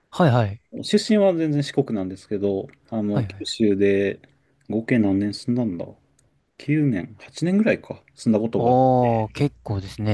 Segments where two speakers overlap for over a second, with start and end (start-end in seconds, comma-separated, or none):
none